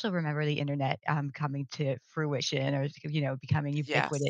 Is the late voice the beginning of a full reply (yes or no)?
no